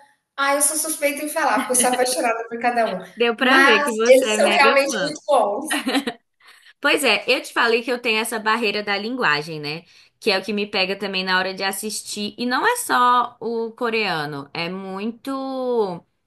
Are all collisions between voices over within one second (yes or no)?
no